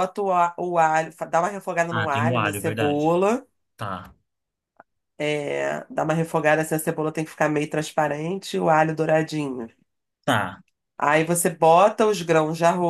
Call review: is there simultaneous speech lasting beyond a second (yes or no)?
yes